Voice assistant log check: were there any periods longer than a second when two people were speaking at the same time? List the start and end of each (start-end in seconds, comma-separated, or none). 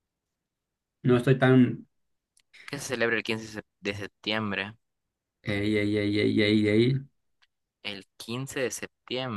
none